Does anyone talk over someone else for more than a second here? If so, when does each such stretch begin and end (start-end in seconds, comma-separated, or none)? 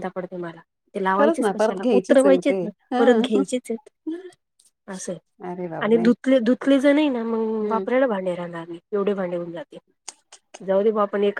1.2-3.0